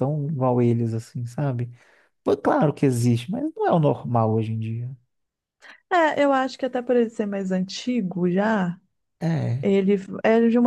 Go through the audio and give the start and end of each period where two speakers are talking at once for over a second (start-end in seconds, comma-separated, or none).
none